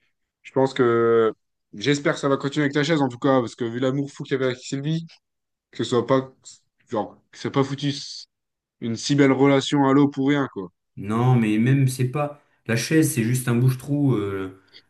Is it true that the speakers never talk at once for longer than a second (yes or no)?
yes